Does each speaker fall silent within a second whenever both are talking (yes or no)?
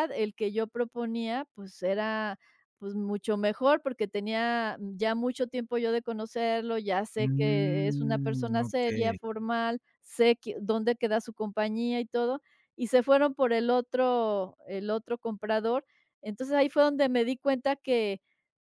no